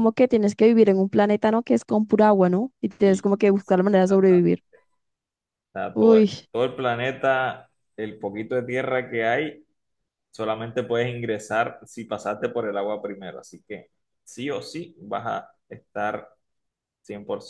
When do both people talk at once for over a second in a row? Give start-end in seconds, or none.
3.0-4.6